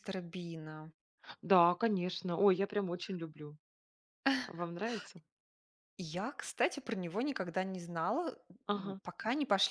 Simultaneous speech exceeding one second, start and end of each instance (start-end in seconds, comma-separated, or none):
none